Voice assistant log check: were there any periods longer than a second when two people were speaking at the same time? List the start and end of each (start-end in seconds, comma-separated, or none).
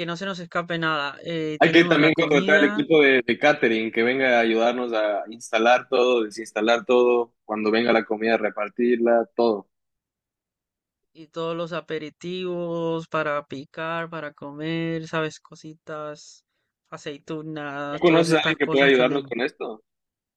1.6-2.9, 17.9-19.3